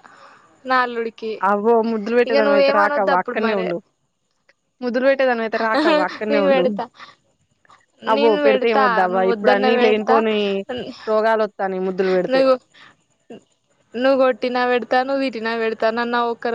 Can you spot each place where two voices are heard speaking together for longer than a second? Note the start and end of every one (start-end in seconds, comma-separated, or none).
8.2-10.2